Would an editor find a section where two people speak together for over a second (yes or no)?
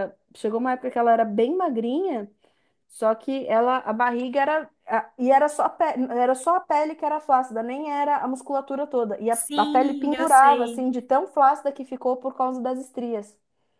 yes